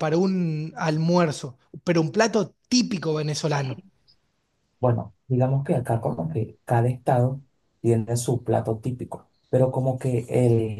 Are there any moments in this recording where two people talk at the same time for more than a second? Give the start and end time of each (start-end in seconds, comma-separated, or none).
none